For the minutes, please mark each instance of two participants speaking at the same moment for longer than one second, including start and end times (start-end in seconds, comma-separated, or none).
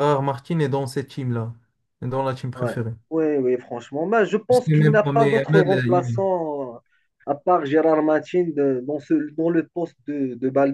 4.5-6.2